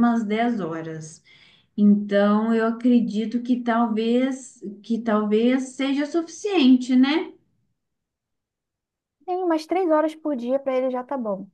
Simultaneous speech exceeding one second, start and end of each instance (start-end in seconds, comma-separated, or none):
none